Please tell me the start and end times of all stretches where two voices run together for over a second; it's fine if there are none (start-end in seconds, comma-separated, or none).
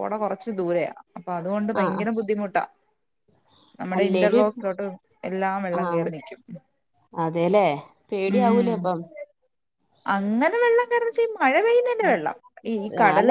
none